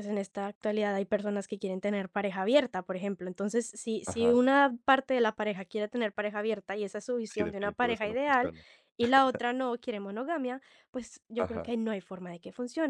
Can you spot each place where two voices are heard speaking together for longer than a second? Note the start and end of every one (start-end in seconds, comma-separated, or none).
7.3-8.5